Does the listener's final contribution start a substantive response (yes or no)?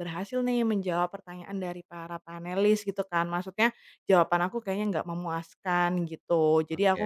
no